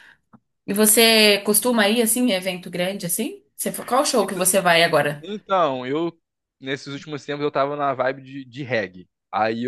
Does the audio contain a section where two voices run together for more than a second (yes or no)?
no